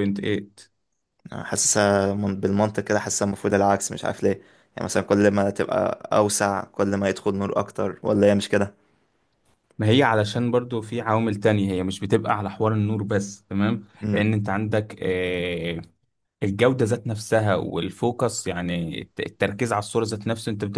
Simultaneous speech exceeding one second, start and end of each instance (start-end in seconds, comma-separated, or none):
none